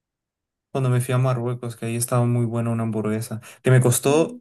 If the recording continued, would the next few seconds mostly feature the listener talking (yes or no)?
no